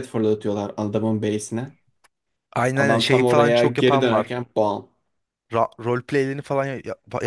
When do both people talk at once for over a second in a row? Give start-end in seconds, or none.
2.8-4.4